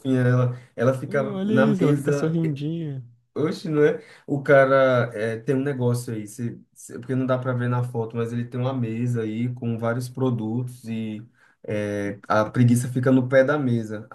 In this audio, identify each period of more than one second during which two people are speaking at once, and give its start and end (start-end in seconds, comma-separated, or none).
1.1-2.4